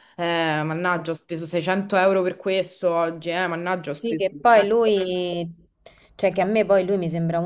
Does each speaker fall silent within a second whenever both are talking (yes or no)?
no